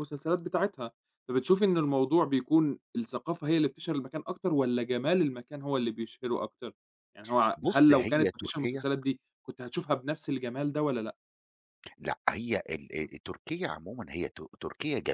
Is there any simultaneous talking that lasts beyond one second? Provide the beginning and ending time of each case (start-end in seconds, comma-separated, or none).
7.6-8.8